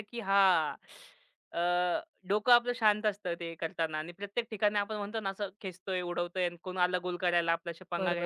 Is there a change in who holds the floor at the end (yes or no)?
yes